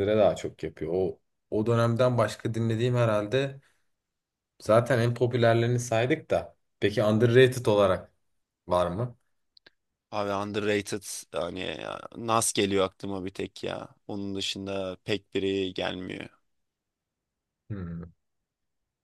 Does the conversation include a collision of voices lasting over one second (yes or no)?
no